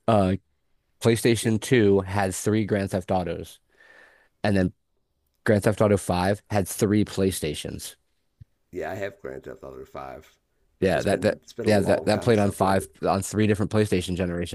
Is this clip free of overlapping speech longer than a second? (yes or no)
no